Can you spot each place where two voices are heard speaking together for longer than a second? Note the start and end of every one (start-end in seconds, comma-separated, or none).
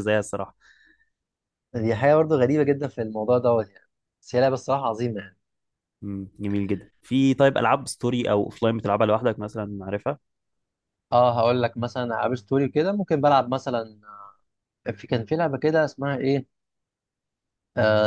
none